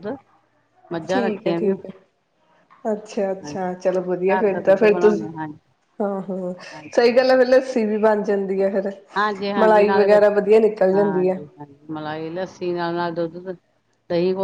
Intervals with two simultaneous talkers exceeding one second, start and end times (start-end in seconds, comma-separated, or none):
3.2-5.1